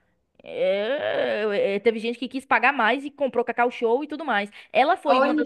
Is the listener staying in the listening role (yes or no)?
yes